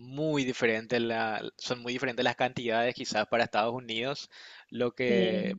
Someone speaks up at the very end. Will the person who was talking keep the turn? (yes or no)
yes